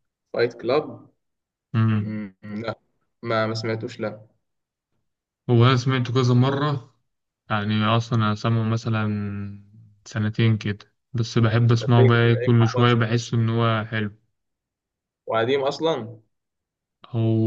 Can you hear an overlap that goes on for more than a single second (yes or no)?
yes